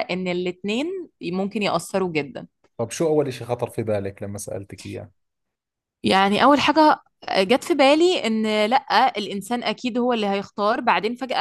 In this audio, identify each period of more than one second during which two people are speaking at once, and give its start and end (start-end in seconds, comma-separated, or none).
none